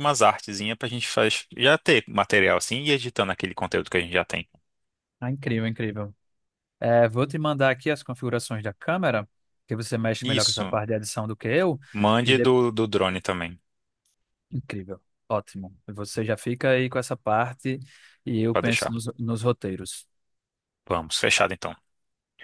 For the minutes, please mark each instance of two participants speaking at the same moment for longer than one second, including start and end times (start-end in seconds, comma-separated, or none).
none